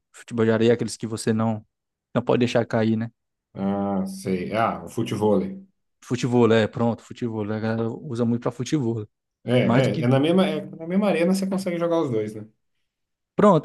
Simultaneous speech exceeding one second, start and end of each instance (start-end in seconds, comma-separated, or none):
none